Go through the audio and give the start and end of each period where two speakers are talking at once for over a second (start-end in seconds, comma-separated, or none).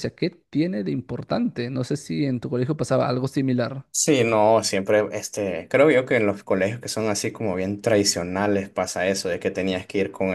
none